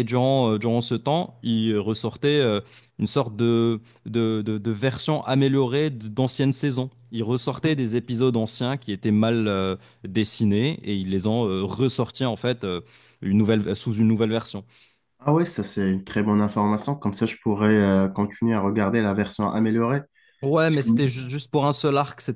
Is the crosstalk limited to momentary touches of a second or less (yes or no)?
yes